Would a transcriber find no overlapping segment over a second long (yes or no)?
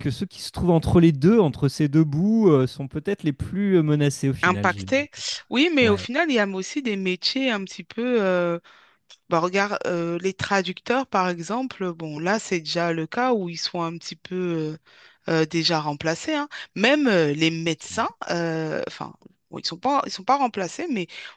yes